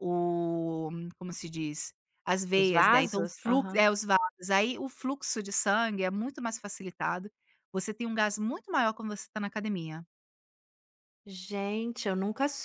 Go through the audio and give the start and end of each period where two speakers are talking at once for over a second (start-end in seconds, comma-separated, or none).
2.5-3.8